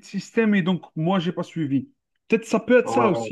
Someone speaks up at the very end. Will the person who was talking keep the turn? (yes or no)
yes